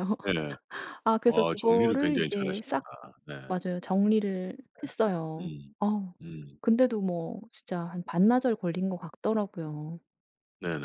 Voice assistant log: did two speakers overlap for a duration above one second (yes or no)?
yes